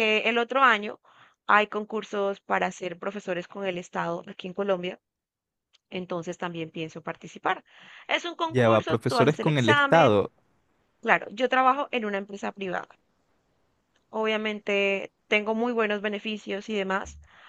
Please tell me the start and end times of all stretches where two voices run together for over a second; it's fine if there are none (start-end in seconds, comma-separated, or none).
8.5-10.2